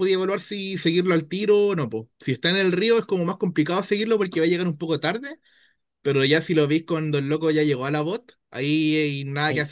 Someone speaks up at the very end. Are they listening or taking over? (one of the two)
taking over